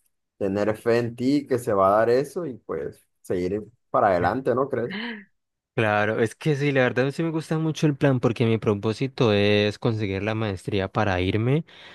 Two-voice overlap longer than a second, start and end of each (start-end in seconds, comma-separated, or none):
none